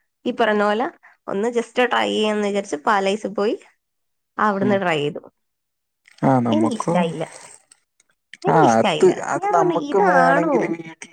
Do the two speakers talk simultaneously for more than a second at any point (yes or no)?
yes